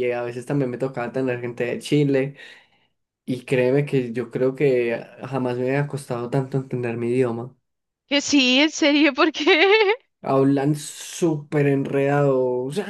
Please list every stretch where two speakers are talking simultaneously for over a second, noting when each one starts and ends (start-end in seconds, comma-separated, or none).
none